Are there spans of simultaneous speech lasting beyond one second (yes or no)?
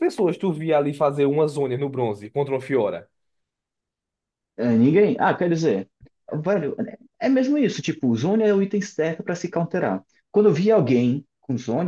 no